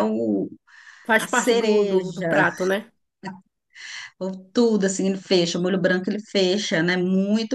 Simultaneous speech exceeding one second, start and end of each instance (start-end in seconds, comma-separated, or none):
1.2-2.4